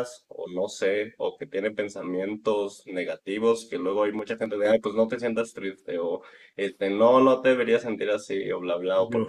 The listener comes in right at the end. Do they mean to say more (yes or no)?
no